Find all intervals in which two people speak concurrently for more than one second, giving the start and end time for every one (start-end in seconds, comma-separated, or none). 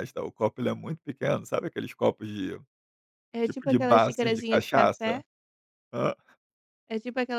3.4-5.2